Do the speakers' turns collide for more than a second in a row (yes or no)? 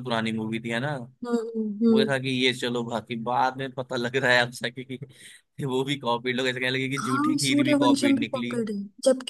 yes